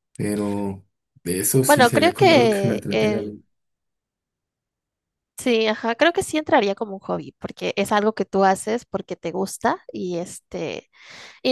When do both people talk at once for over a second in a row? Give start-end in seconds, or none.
1.6-3.4